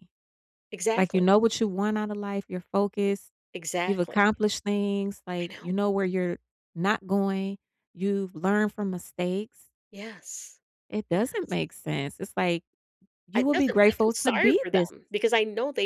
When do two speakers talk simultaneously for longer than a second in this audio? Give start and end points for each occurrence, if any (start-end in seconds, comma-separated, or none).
13.4-14.9